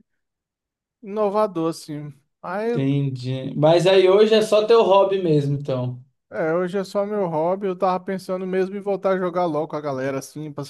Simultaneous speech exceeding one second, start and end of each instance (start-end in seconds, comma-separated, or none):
none